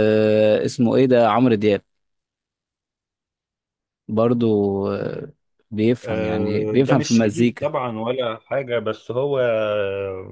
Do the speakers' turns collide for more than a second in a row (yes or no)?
yes